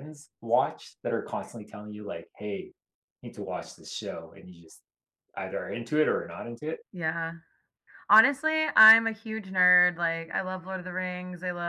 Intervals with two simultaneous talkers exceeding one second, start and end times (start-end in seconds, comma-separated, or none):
none